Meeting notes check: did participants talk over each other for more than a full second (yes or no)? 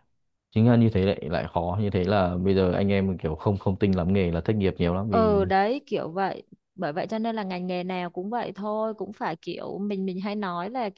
no